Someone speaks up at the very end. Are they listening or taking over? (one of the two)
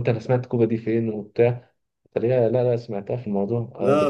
taking over